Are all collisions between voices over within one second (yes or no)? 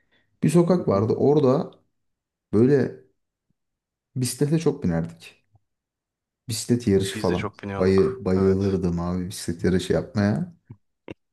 no